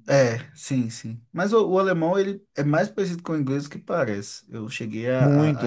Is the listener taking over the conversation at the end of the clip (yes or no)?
yes